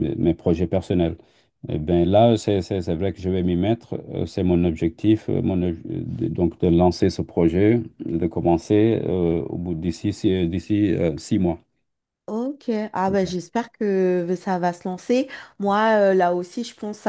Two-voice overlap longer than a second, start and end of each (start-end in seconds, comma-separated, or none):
none